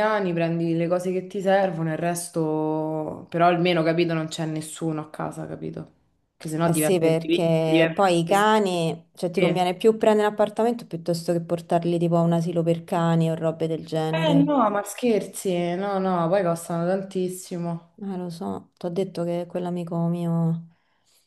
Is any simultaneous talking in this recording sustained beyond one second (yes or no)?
yes